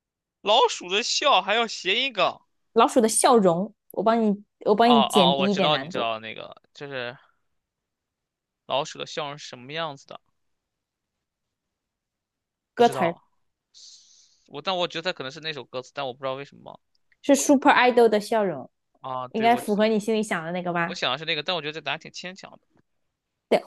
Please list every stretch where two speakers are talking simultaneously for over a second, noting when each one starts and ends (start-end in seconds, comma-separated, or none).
4.8-6.1